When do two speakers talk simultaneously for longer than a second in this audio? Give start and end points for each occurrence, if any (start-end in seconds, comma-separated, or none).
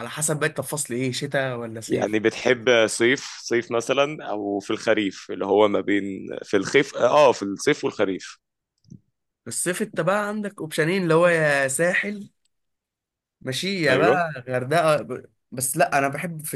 none